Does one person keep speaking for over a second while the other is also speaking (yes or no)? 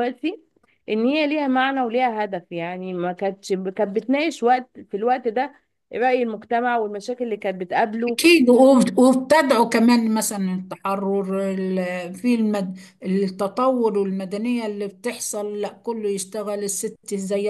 no